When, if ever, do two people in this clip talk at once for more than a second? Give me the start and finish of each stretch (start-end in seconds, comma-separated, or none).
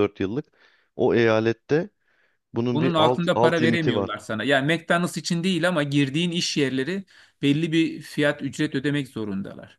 2.7-4.1